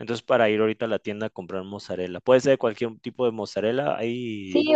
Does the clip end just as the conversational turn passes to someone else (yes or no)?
yes